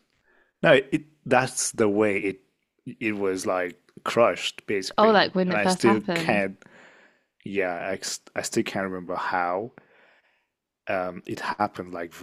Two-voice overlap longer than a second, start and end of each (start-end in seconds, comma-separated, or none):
5.0-6.5